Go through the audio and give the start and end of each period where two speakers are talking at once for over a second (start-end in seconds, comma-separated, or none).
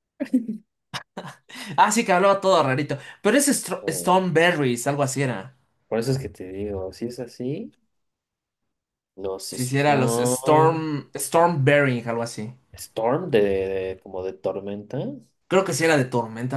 9.5-10.8